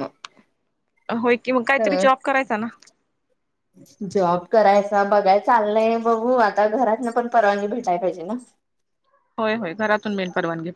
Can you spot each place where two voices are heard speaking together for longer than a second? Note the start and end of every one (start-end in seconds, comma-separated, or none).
none